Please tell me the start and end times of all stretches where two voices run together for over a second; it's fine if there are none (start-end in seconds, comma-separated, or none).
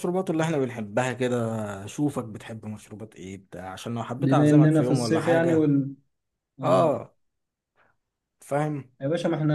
4.2-5.7